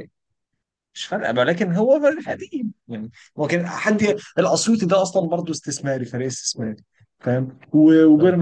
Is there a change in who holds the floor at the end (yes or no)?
no